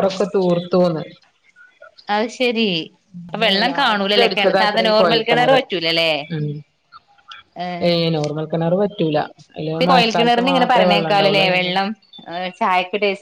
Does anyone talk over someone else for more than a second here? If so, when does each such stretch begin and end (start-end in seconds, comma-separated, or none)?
3.7-5.2